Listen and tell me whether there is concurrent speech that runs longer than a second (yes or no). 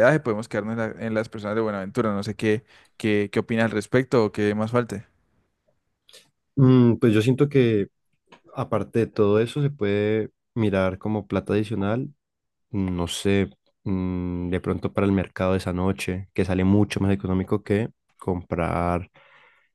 no